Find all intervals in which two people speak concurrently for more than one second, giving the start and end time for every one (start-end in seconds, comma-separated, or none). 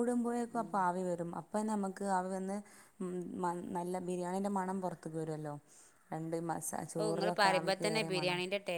none